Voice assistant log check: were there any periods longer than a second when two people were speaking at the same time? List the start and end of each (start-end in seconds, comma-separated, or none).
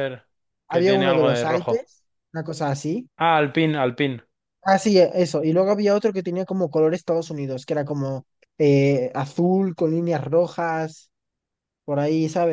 0.7-1.9